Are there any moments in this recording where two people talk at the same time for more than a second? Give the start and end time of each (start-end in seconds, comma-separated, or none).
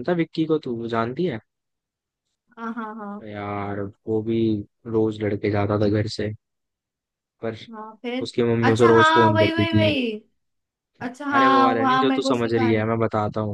8.2-9.9, 11.3-12.9